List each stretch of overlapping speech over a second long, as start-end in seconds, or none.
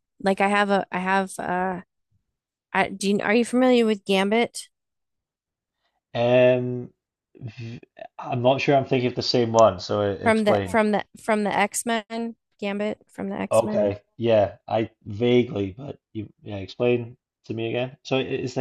none